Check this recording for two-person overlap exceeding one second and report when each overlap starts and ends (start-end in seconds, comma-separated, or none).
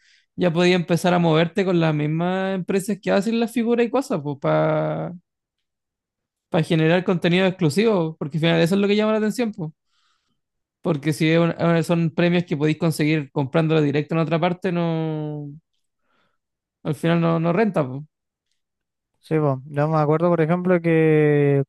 none